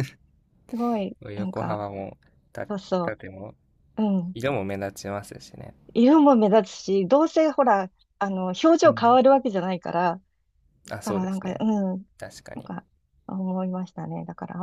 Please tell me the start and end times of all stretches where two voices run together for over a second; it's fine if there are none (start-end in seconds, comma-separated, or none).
none